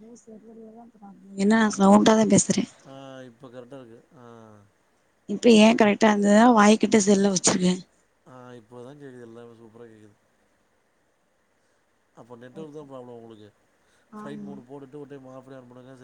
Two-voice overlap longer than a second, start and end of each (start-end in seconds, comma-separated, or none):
none